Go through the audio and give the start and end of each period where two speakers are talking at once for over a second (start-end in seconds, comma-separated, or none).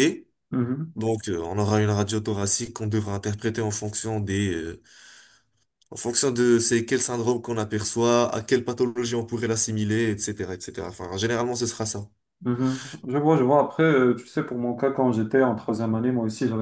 none